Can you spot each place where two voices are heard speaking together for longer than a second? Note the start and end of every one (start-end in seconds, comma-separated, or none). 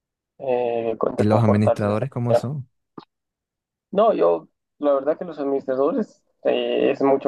1.2-2.5